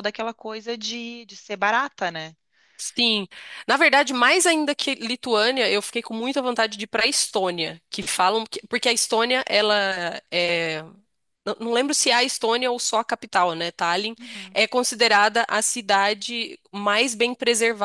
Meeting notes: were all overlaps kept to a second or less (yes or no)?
yes